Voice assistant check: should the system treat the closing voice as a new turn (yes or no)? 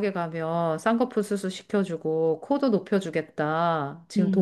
no